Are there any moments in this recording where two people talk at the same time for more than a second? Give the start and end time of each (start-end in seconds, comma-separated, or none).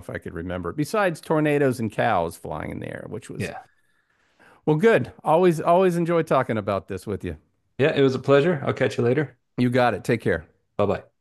none